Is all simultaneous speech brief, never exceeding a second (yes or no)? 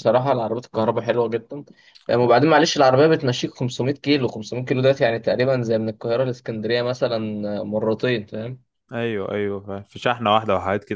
yes